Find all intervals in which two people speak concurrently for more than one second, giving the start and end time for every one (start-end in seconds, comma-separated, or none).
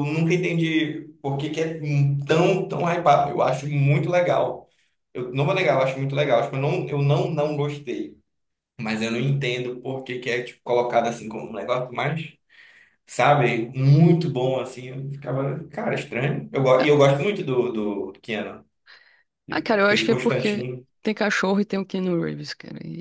19.5-20.9